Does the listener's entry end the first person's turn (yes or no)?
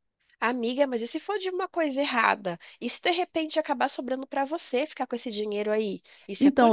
yes